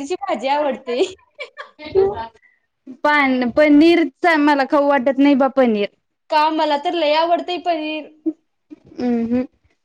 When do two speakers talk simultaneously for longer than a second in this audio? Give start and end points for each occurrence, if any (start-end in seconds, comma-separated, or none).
none